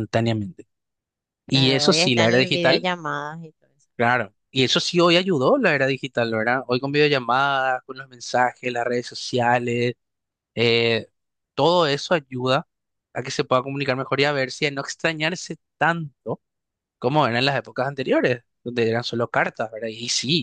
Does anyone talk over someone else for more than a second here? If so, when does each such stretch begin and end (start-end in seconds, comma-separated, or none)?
1.5-2.9